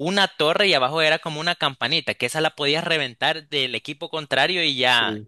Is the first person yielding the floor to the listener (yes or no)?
no